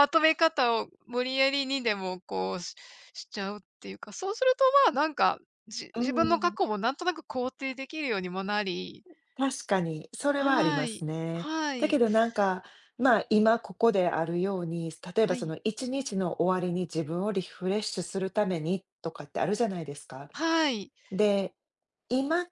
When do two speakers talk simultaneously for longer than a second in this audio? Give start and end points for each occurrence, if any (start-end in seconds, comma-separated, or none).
10.4-12.0